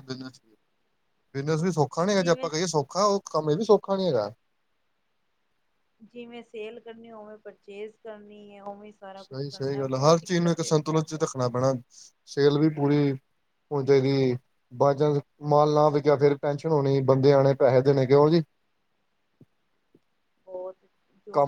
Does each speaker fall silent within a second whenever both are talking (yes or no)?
yes